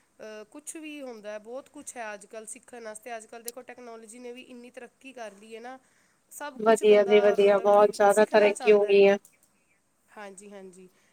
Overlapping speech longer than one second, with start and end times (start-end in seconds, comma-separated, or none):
6.7-9.0